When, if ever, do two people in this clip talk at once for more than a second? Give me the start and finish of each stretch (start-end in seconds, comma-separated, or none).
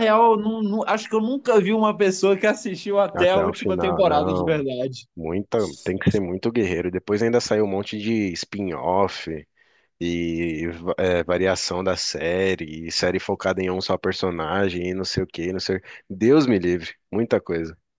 3.1-4.7